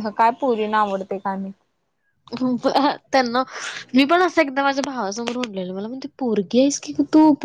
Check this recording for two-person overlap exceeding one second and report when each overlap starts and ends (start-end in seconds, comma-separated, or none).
none